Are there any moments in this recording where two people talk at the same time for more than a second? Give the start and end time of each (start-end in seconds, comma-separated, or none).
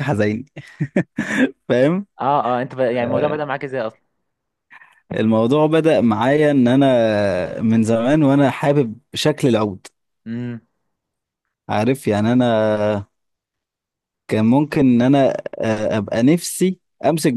none